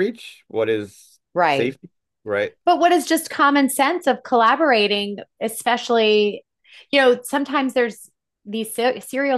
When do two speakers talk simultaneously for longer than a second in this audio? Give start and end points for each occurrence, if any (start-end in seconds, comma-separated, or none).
none